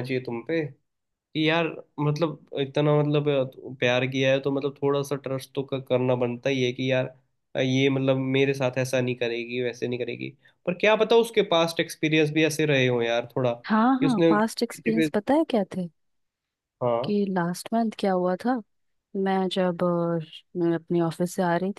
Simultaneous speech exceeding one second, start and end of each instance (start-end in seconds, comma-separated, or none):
13.6-15.1